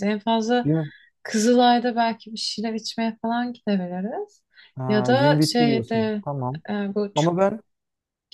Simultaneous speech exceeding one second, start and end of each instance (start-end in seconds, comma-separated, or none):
4.9-6.2